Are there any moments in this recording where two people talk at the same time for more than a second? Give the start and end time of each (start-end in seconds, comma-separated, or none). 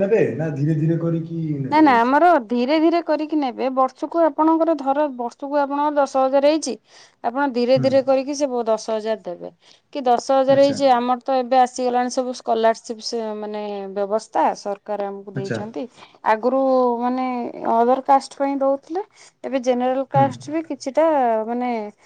none